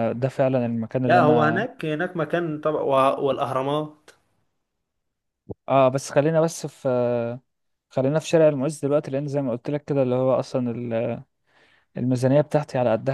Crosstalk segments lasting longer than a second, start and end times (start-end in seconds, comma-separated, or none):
none